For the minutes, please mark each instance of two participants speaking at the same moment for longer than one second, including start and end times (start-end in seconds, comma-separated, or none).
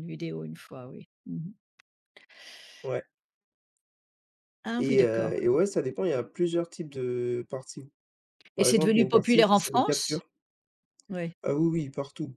8.6-10.2